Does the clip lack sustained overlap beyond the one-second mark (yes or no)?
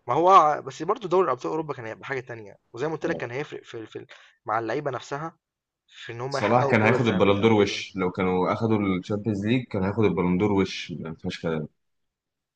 no